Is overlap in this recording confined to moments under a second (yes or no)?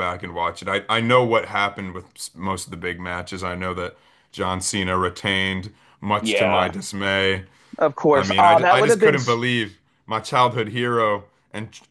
no